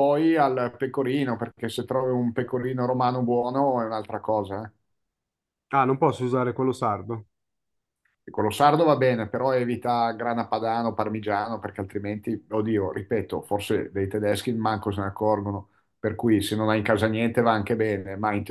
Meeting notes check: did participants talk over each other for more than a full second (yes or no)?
no